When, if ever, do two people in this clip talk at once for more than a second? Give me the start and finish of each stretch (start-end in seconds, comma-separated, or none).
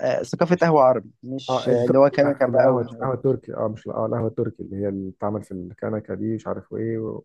1.5-3.2